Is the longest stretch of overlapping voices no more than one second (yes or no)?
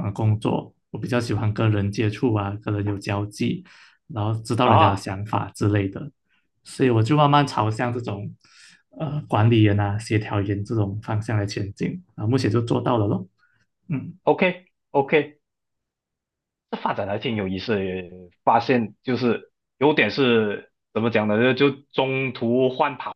yes